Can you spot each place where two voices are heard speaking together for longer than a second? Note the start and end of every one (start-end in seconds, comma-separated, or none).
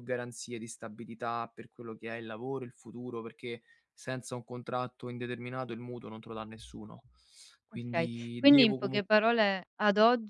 7.7-9.1